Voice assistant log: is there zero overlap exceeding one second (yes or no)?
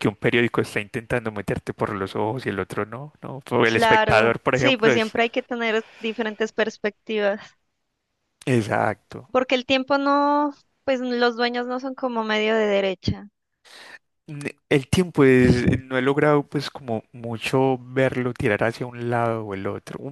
no